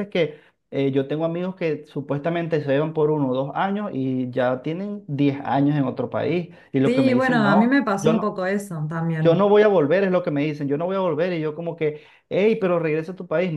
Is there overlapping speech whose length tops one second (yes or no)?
yes